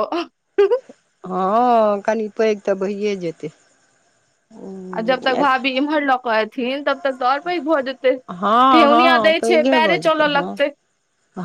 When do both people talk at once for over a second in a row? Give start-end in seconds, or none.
8.8-10.5